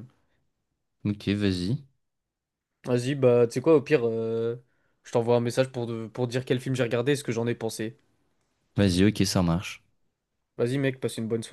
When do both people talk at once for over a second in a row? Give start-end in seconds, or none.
none